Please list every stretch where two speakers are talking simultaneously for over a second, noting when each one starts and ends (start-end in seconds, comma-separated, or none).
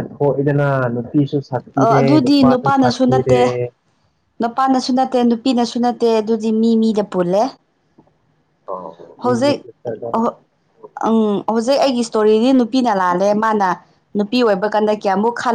1.8-3.4